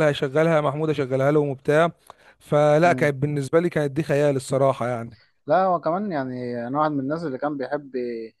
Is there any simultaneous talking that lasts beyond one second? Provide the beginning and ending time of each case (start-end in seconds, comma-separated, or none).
none